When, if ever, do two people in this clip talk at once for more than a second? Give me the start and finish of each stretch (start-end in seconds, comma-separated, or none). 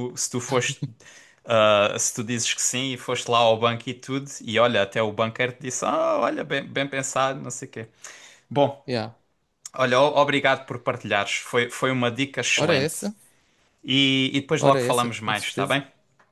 14.6-15.8